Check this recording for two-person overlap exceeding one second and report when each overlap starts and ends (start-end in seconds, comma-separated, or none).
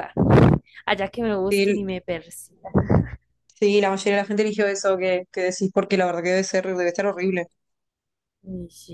none